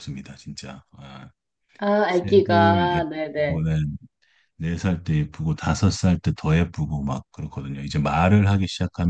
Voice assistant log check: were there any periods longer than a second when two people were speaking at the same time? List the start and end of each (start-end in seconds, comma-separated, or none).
2.1-3.6